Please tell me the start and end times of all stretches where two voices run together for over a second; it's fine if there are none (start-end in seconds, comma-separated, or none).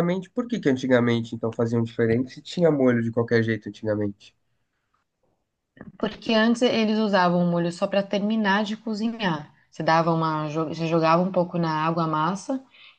none